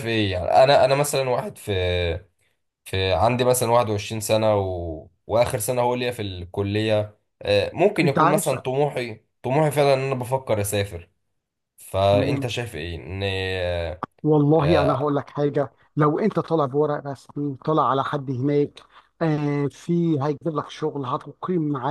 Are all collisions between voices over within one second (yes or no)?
yes